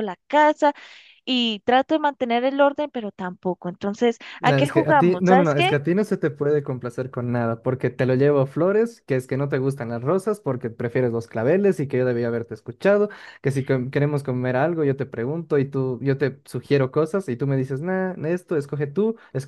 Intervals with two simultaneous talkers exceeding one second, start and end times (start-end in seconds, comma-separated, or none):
4.4-5.8